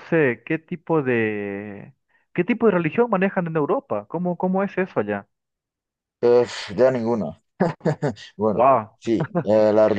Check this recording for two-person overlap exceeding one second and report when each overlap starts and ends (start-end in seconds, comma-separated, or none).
none